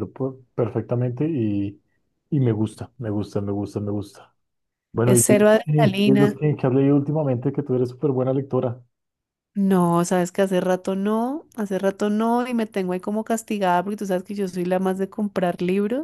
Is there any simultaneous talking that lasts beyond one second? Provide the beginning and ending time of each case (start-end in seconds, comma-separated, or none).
5.0-6.4